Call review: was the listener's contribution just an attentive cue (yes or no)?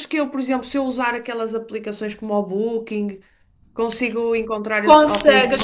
no